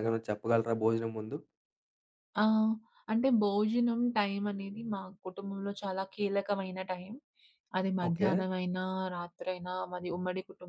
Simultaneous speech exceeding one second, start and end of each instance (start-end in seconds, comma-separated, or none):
none